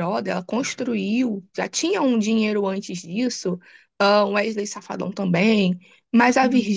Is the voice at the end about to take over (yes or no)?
no